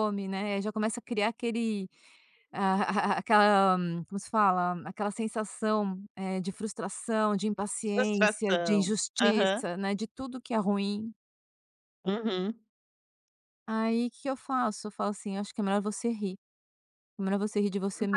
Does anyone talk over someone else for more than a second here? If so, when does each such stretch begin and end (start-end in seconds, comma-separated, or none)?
7.9-9.6